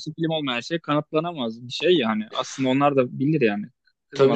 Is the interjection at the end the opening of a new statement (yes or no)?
yes